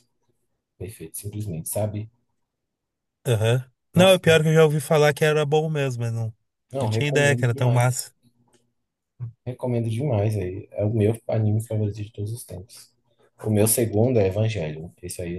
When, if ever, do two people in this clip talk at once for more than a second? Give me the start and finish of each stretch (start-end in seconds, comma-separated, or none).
6.8-8.0